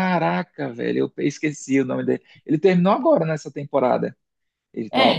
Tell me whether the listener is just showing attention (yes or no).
no